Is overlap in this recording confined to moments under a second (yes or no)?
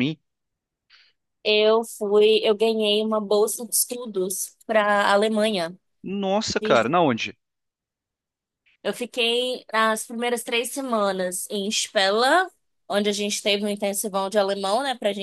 yes